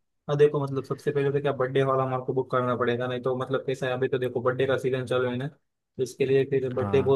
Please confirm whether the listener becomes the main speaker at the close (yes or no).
no